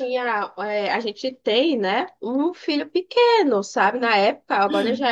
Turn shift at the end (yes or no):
no